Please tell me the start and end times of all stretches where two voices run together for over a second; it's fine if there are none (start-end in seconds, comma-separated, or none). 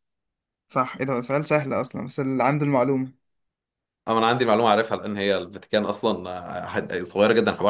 none